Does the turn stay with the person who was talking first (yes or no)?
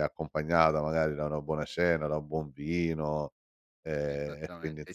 no